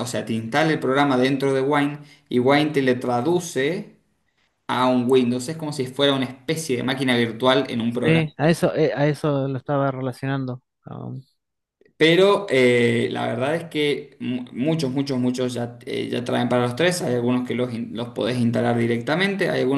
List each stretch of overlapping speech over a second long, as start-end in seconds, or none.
none